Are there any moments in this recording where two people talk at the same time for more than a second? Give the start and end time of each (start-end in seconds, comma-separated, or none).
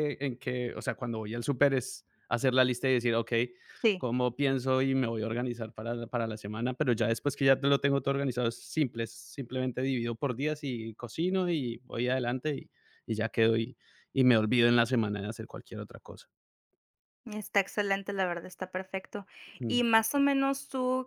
none